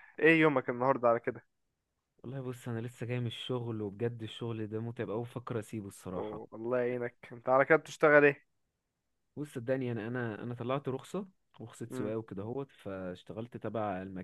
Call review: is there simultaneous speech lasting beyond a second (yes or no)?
no